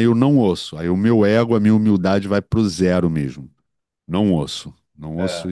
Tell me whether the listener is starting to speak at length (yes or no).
yes